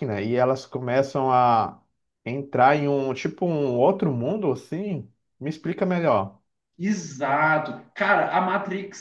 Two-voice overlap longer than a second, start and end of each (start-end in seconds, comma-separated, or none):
none